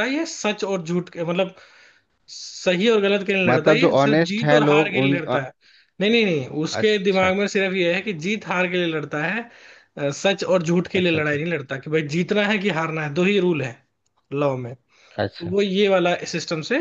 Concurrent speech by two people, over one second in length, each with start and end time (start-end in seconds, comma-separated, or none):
3.5-5.4